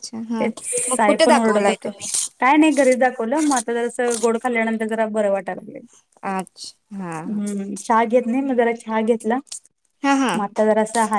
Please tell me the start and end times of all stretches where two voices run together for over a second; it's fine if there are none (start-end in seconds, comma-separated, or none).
none